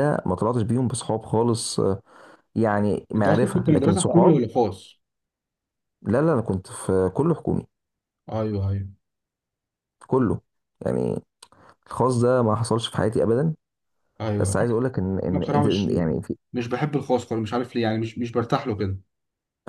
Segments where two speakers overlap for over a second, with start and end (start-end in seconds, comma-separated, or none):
3.2-4.4